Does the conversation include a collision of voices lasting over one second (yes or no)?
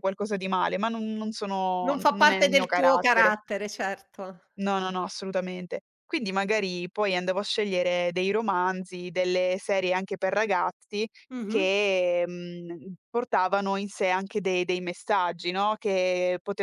yes